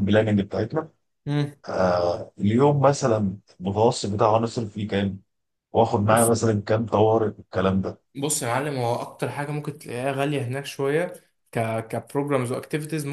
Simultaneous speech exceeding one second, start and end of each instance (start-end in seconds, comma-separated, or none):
none